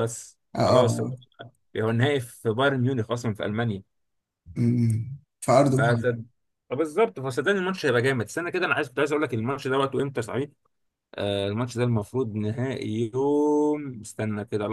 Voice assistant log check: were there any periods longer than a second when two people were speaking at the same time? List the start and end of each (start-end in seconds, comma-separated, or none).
none